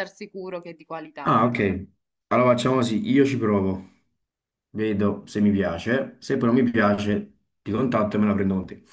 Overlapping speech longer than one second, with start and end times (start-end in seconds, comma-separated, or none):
none